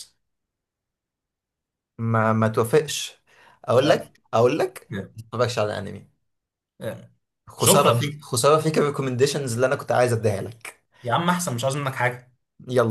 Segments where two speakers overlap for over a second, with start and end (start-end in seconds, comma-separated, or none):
none